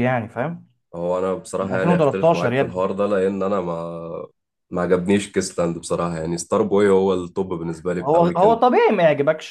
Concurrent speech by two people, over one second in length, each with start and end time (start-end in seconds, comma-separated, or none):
1.6-2.8